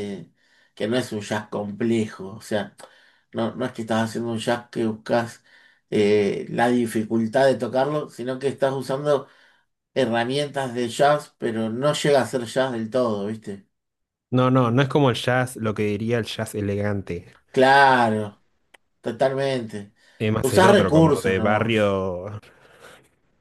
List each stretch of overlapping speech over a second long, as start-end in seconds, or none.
20.4-21.8